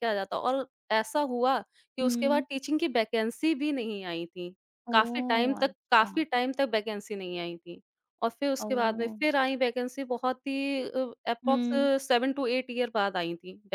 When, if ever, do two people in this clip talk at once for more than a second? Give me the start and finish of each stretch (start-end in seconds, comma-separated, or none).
4.9-6.2